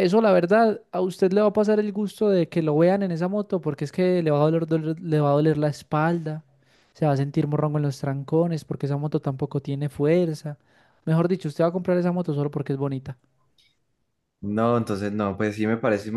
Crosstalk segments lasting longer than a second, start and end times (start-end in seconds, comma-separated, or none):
none